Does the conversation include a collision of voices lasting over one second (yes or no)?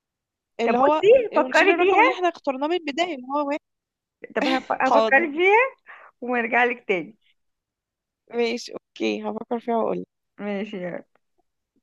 yes